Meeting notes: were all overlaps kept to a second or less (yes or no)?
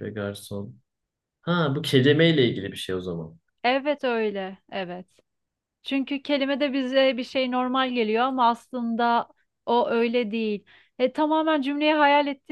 yes